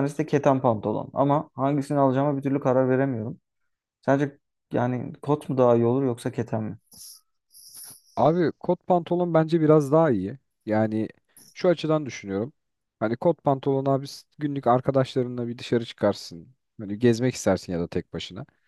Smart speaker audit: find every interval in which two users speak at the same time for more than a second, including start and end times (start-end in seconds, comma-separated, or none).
none